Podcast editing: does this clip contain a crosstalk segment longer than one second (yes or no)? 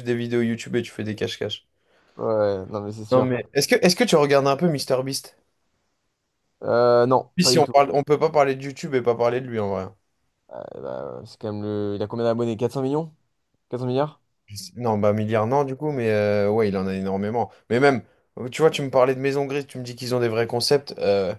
no